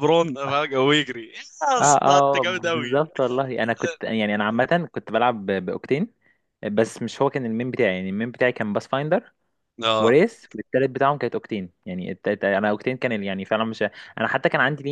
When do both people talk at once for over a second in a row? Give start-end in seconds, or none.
1.8-3.0